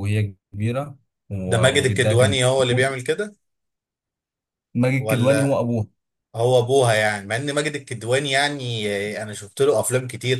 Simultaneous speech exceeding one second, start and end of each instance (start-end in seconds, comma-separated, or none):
1.5-3.0